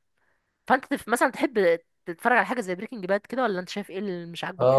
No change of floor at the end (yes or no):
no